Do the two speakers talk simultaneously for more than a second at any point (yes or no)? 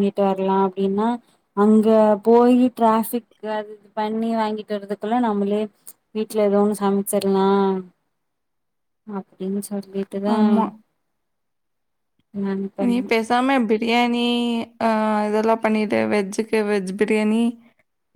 no